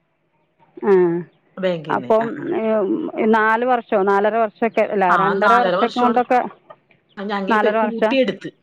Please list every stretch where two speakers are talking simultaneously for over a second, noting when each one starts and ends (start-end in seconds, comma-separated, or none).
none